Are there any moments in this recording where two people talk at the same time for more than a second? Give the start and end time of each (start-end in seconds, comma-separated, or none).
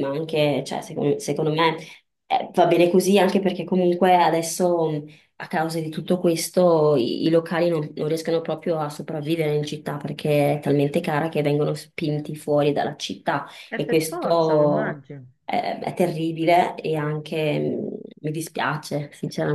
13.7-15.0